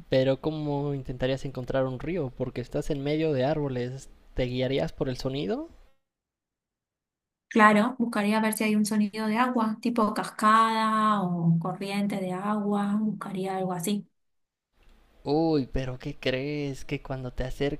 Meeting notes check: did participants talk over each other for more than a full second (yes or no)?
no